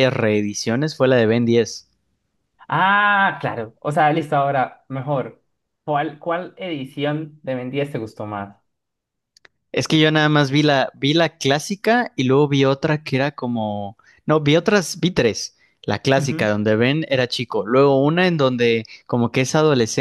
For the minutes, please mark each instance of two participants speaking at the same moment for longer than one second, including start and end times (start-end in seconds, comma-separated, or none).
none